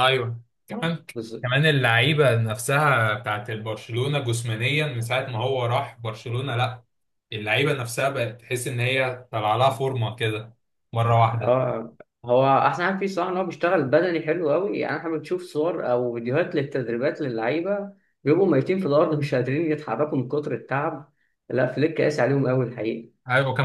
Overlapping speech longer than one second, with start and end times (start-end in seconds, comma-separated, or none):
none